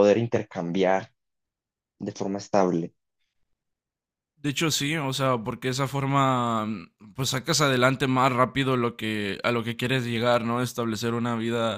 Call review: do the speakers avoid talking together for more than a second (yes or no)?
yes